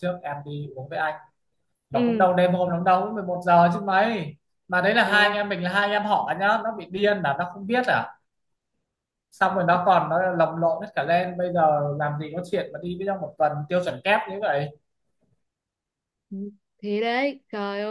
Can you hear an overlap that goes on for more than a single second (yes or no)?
no